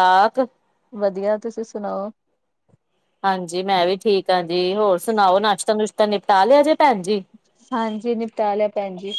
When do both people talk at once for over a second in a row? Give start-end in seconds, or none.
none